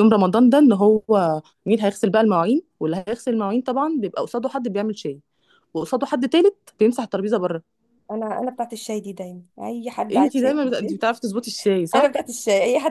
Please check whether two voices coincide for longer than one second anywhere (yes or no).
no